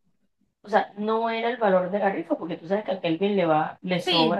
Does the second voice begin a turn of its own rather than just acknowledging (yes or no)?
yes